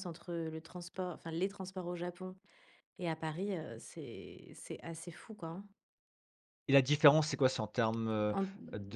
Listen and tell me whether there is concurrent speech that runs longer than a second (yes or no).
no